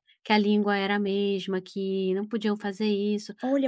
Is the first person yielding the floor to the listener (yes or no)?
yes